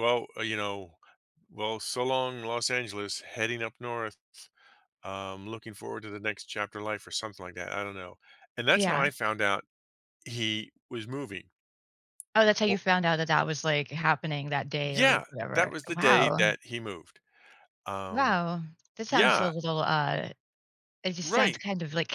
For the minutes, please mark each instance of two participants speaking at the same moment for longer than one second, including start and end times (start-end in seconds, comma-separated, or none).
14.8-16.5